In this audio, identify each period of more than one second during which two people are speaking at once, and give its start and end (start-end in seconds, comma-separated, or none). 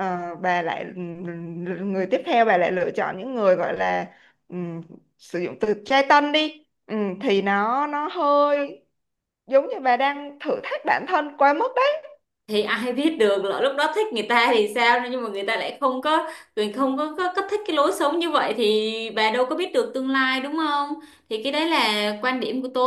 none